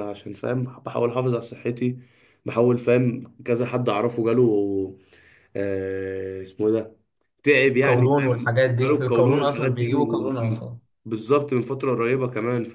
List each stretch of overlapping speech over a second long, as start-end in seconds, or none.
7.7-10.3